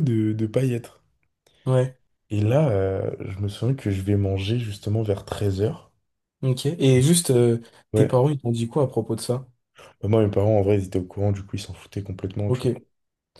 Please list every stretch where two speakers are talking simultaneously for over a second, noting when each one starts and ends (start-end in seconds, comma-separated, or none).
none